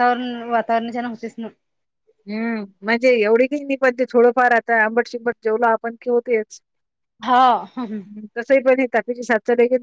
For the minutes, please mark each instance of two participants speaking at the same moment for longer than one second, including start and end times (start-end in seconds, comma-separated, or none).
none